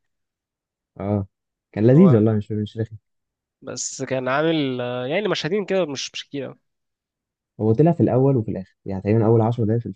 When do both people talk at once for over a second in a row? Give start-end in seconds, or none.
none